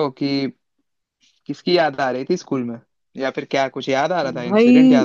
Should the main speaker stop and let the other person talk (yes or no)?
yes